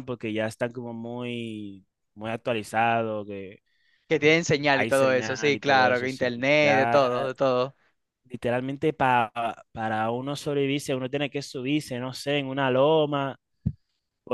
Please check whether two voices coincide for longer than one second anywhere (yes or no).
yes